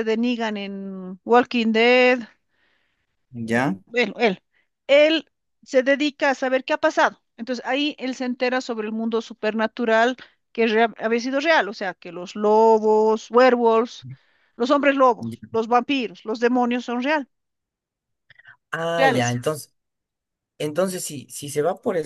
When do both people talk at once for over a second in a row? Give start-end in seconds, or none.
none